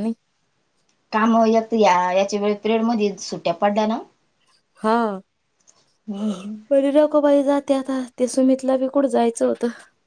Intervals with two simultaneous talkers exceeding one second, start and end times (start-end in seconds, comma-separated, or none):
none